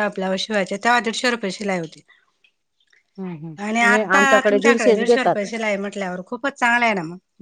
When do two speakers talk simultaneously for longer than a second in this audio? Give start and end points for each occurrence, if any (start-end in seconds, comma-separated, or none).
3.7-5.5